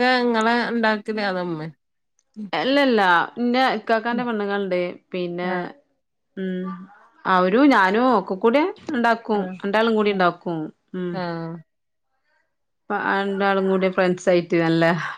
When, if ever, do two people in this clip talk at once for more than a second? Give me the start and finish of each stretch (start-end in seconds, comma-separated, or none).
none